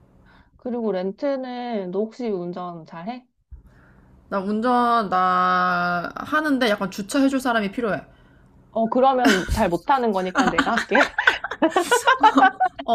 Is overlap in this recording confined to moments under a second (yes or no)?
yes